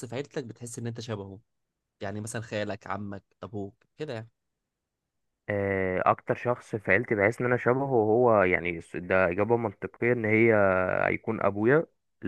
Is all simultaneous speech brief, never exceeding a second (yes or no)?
yes